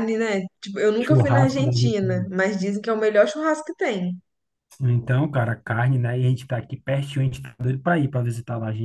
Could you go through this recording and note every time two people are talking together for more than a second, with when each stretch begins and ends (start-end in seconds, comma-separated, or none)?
1.0-2.3